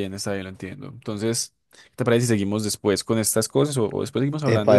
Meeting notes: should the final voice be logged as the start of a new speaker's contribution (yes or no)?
yes